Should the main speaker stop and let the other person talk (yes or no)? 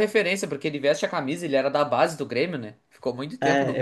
yes